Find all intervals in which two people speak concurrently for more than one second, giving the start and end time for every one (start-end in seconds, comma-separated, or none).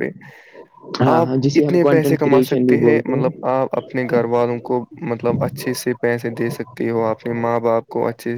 1.1-3.2